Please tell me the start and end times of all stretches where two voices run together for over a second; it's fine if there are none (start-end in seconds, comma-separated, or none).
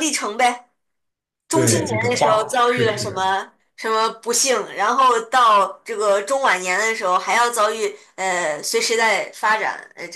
1.5-3.2